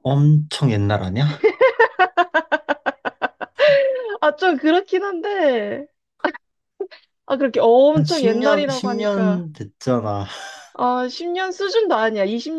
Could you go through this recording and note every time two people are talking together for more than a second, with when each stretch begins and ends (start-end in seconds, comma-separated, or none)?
7.9-9.5